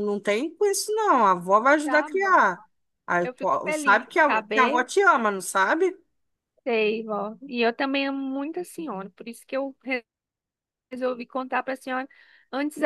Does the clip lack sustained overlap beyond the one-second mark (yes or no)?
no